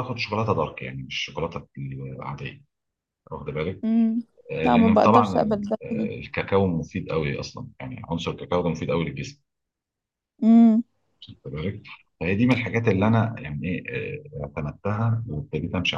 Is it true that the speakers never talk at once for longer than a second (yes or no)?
no